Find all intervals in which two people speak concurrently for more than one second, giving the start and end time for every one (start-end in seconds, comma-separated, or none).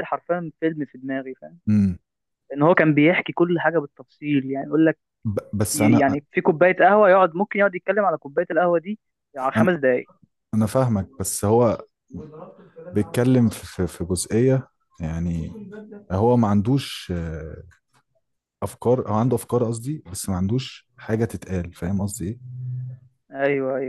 none